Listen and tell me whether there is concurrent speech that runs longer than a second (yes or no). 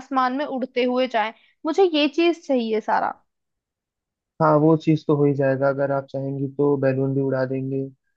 no